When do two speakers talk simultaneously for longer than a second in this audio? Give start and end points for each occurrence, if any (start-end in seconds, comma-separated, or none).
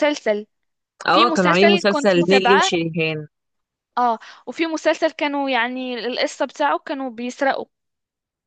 1.1-2.7